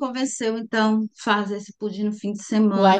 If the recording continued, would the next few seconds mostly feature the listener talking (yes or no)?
yes